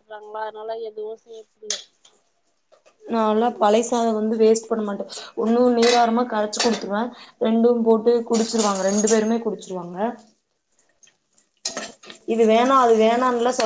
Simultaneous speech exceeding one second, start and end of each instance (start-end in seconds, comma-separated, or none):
none